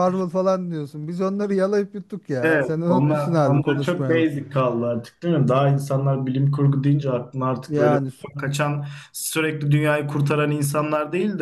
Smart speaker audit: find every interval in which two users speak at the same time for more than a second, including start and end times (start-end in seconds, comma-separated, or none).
2.4-4.2